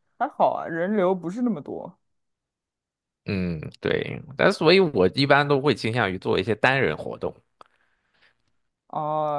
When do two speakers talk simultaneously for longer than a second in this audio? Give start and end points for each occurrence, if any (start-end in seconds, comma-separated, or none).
none